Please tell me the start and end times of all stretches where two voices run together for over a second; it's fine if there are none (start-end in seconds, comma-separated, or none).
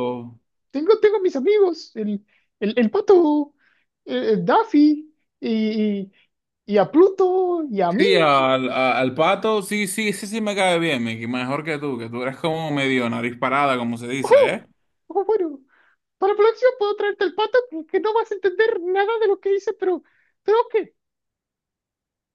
none